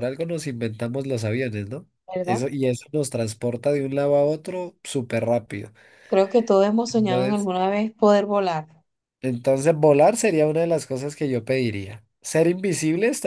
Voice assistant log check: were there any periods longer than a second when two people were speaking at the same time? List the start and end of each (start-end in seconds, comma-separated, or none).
none